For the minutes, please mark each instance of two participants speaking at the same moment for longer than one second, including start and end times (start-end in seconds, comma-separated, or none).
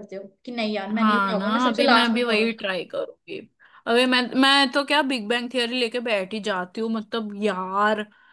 1.0-2.5